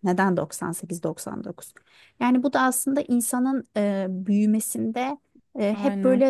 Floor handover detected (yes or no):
no